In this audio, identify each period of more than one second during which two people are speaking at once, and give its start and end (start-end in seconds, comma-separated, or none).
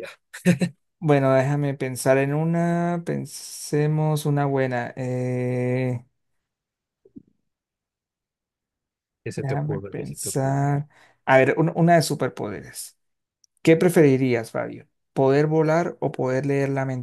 9.3-10.8